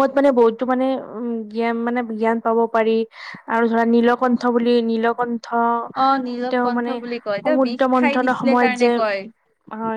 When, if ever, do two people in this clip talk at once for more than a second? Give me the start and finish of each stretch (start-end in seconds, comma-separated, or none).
6.5-8.9